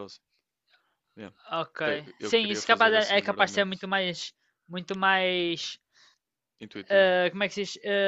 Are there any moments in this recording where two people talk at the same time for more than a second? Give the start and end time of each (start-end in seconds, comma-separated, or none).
2.2-3.9